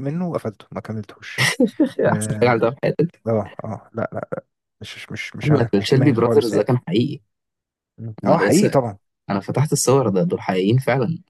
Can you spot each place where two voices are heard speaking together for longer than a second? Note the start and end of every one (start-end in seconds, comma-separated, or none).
5.4-6.7